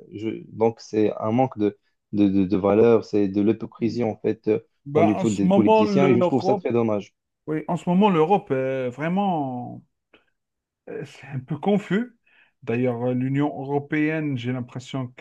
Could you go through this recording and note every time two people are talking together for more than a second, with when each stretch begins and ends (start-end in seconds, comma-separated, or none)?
5.0-6.7